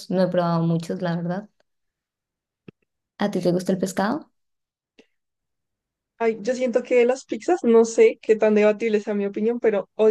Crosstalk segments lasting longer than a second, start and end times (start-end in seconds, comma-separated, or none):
none